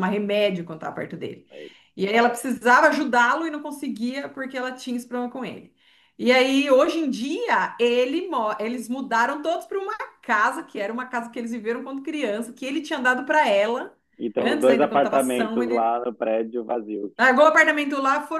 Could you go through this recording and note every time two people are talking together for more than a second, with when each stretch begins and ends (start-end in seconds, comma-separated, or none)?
14.4-15.9